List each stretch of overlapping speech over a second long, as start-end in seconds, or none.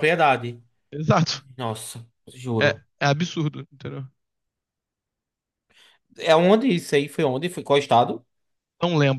none